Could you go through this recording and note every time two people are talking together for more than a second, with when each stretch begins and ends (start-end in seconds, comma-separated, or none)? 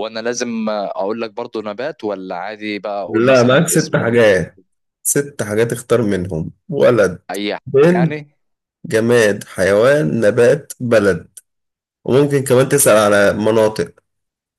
3.1-4.3